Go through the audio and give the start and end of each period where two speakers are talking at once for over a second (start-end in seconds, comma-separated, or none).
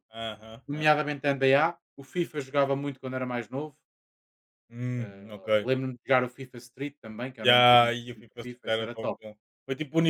7.4-9.2